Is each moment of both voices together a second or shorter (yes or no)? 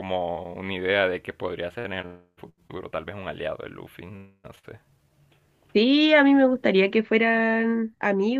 yes